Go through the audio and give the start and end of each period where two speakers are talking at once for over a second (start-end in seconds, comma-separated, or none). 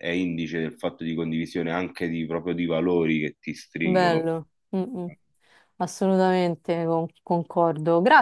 none